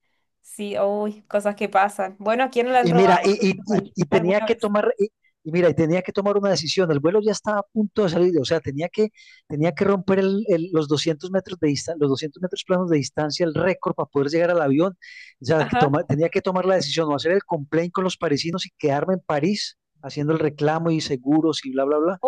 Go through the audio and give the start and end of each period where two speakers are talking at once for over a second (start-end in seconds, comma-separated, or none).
2.8-4.7